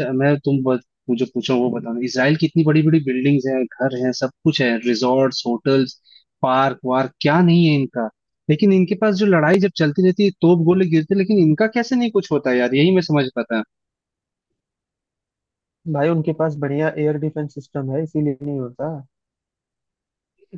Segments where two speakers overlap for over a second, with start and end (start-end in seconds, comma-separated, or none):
none